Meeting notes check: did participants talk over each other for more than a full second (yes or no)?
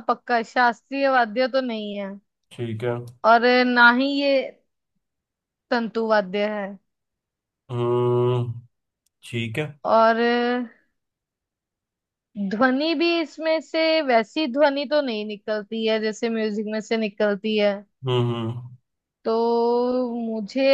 no